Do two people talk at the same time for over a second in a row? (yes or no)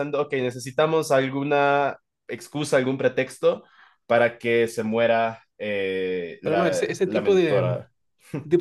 yes